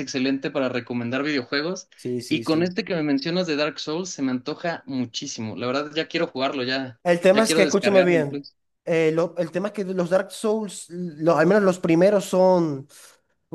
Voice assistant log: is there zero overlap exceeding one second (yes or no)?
no